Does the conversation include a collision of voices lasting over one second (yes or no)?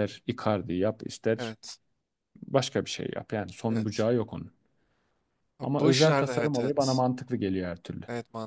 yes